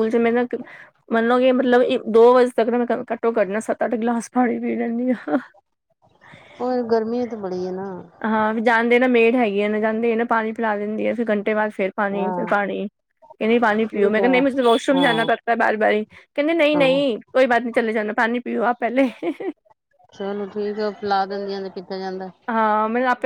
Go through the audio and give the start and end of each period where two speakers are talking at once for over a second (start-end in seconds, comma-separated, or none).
none